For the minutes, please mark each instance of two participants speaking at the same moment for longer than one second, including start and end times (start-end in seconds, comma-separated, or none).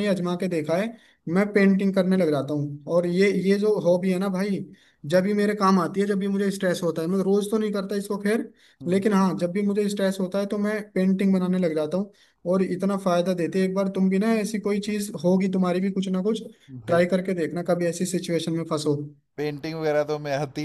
none